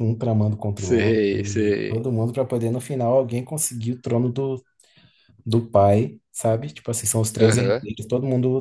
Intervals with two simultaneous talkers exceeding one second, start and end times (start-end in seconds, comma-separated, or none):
0.8-2.1